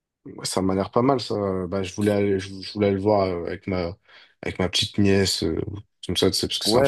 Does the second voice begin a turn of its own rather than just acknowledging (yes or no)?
yes